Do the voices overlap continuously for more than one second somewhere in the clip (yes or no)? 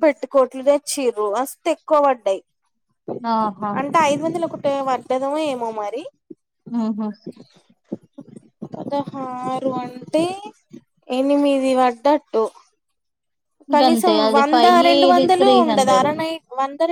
yes